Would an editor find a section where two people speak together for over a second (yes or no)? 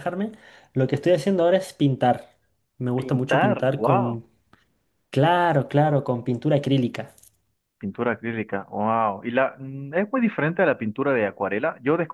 yes